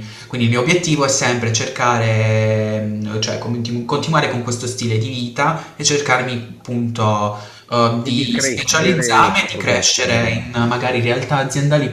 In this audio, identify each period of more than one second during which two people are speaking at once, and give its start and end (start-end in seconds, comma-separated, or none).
8.0-10.5